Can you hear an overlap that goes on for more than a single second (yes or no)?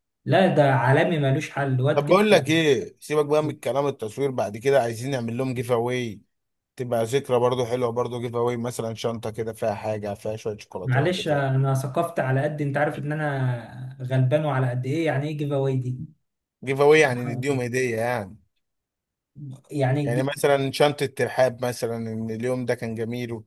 no